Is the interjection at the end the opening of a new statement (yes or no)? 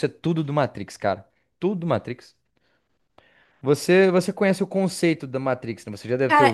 yes